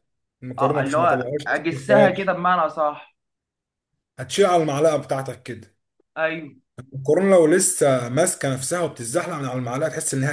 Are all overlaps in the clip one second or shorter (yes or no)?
no